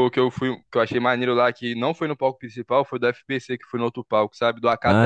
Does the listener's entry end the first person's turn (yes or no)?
yes